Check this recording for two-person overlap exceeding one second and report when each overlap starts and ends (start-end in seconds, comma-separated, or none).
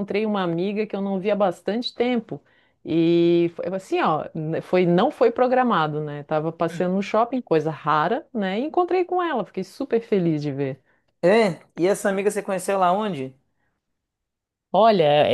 none